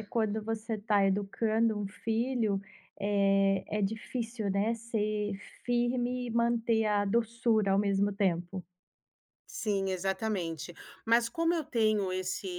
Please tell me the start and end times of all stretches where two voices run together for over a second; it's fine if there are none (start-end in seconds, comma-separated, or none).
none